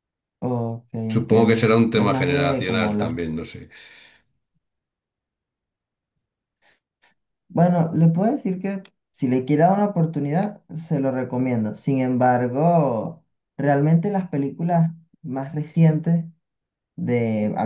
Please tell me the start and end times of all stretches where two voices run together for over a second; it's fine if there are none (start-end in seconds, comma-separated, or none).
1.1-3.2